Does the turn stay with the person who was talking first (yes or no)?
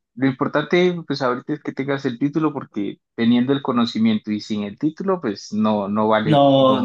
no